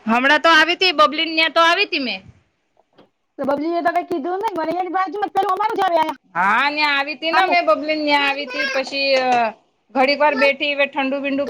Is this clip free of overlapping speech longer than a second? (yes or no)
yes